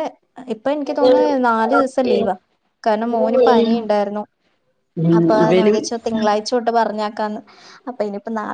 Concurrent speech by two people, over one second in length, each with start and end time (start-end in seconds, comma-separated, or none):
0.9-2.2